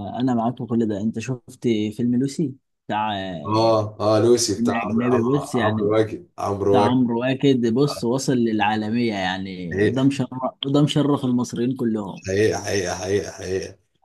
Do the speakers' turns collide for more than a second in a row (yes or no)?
yes